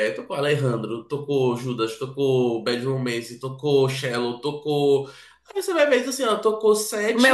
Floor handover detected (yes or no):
yes